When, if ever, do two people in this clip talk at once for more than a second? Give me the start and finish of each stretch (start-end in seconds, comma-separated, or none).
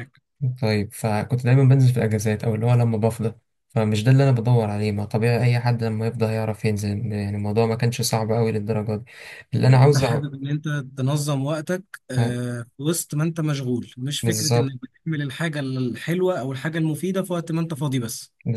none